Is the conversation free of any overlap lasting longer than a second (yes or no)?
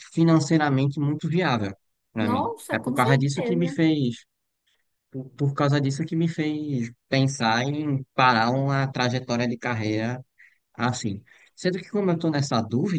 no